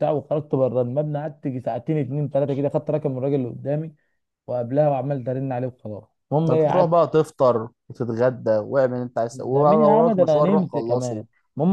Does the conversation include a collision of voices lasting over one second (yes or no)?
yes